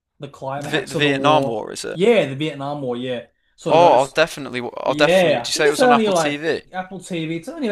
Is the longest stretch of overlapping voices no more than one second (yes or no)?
no